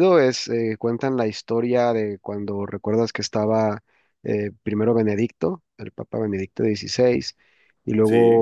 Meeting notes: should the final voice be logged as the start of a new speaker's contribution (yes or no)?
no